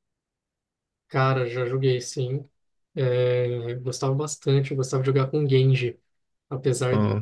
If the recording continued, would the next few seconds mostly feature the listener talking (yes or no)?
no